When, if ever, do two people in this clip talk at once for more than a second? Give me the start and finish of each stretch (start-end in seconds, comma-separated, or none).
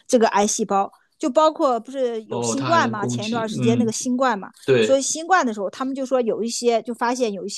2.3-3.9